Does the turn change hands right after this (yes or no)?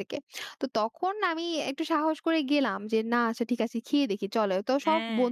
no